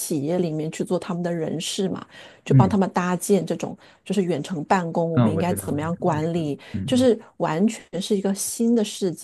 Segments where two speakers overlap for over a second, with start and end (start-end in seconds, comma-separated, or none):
5.2-7.1